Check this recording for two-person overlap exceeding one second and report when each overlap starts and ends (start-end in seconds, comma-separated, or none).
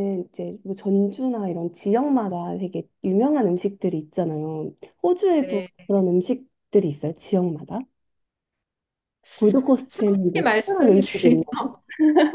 9.9-11.4